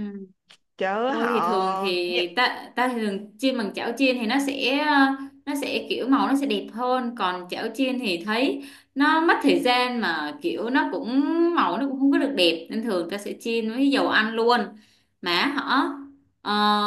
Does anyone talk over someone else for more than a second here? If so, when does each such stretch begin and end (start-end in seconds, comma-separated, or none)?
1.1-2.4